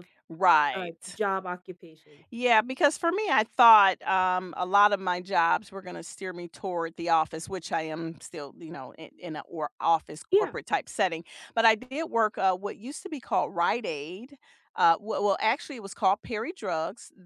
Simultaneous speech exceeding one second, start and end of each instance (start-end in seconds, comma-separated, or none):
none